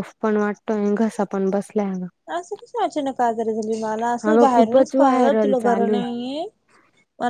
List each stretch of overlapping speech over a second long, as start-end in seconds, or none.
4.3-5.9